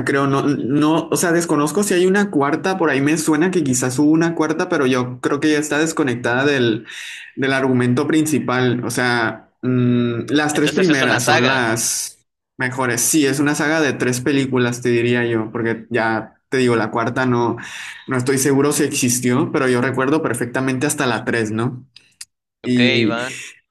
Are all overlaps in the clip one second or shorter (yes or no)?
no